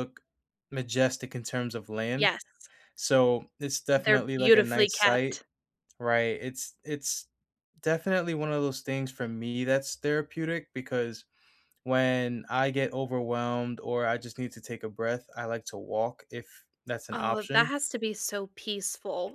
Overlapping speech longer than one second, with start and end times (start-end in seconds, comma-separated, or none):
4.0-5.4